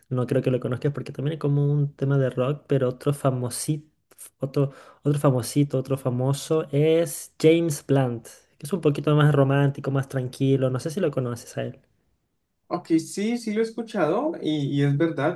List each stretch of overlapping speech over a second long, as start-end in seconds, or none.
none